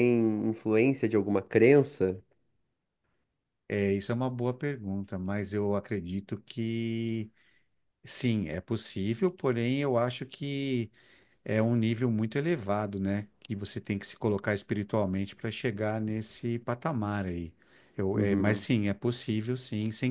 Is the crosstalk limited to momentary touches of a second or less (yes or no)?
yes